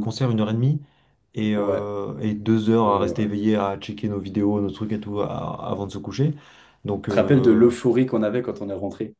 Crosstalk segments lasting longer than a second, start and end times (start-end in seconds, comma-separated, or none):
none